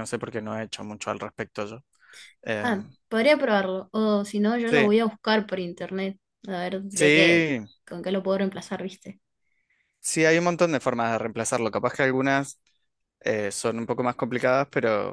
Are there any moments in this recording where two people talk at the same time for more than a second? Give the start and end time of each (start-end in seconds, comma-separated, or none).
none